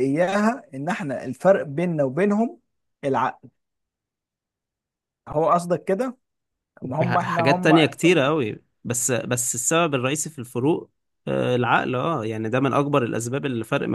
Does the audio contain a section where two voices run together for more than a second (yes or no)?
yes